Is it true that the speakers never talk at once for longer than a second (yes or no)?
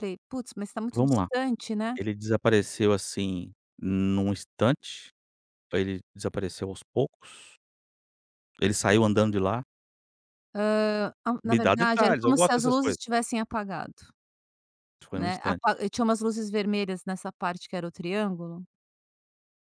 no